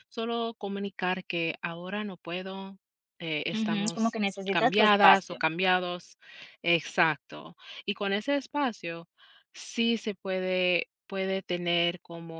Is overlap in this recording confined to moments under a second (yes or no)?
no